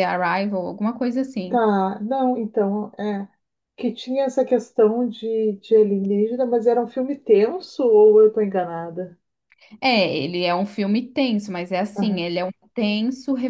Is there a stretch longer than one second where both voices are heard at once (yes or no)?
no